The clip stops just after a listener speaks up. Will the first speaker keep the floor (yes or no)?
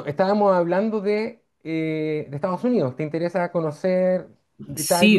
no